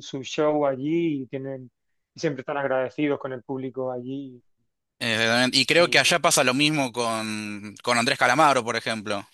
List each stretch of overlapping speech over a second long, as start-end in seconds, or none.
none